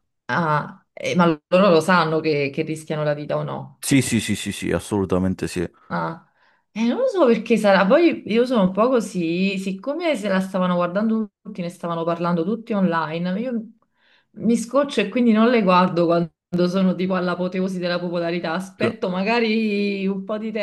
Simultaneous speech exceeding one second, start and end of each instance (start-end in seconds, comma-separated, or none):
none